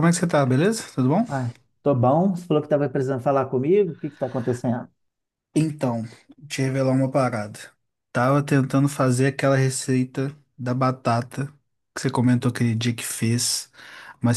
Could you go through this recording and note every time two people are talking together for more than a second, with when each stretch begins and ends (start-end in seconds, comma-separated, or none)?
none